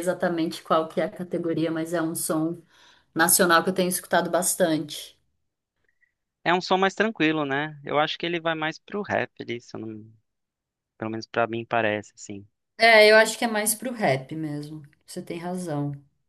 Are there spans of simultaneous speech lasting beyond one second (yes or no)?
no